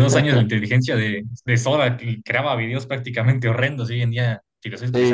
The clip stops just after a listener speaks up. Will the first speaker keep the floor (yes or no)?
no